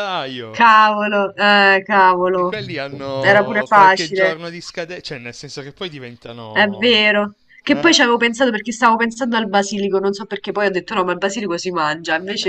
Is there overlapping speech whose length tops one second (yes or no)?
yes